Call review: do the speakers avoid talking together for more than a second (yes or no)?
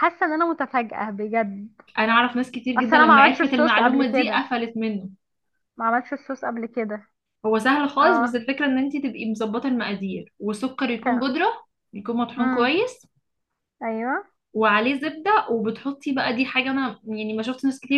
no